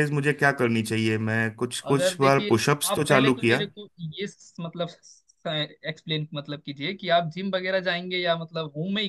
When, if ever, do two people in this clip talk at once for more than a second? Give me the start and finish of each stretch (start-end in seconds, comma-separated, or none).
1.9-3.6